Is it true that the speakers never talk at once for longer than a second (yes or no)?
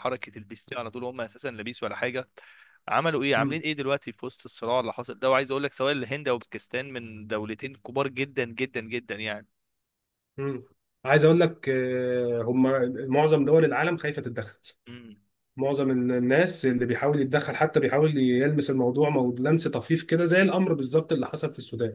yes